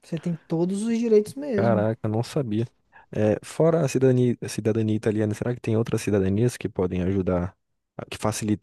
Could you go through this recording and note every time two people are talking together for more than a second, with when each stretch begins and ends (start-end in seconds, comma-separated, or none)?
none